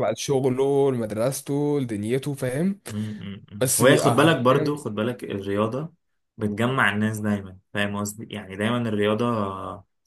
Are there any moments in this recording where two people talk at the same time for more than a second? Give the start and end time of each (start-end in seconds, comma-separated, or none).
3.6-4.8